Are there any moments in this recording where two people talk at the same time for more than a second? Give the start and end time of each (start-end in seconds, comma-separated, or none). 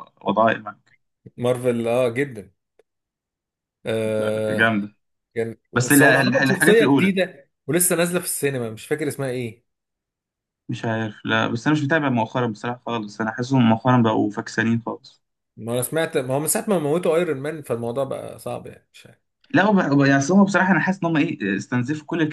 5.7-7.2